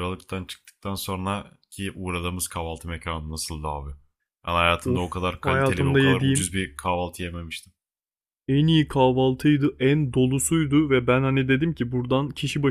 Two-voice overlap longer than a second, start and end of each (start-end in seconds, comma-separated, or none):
4.8-6.5